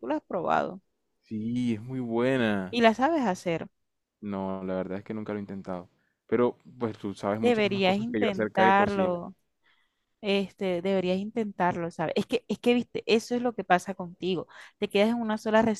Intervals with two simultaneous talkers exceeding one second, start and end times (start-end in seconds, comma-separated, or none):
7.4-9.2